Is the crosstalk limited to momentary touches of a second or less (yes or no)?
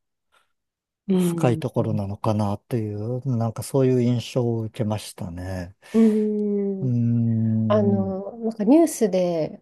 yes